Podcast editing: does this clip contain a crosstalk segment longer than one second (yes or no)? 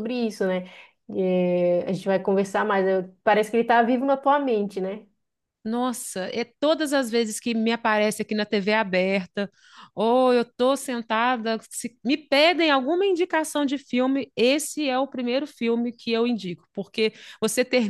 no